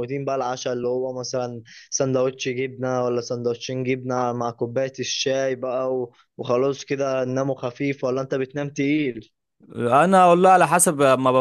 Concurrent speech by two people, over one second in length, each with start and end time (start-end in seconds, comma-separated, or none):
none